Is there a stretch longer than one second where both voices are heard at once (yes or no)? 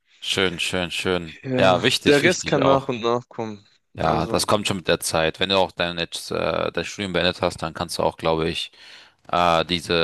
yes